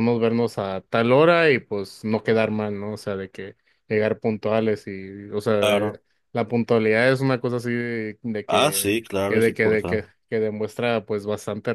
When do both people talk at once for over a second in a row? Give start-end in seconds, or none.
8.4-10.1